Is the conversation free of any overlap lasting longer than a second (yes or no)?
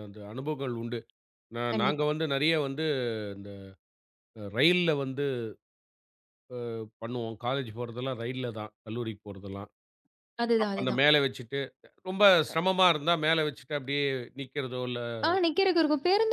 yes